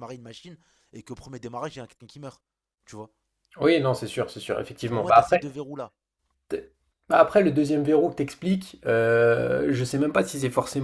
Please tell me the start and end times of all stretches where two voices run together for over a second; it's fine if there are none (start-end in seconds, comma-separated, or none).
none